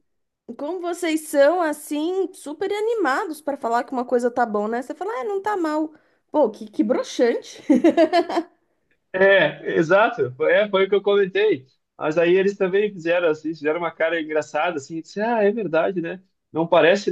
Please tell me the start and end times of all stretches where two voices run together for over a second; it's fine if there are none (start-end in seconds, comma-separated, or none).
none